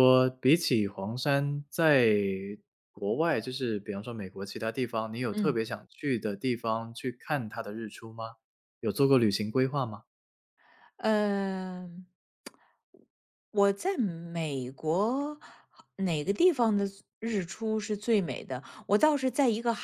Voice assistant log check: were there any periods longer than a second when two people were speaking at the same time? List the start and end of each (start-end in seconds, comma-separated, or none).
none